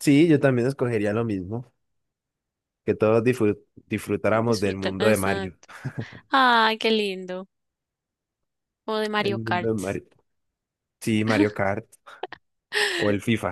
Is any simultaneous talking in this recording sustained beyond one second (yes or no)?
yes